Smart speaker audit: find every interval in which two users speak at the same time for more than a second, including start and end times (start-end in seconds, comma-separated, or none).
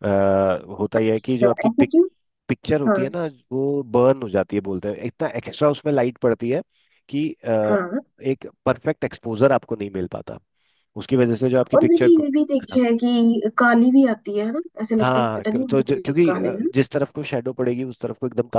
15.0-16.7